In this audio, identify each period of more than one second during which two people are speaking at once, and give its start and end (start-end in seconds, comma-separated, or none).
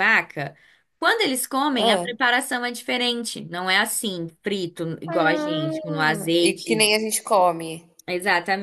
5.1-6.9